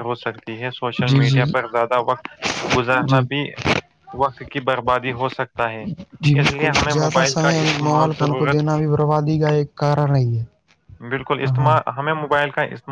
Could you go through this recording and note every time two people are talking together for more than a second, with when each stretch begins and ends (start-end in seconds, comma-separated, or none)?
none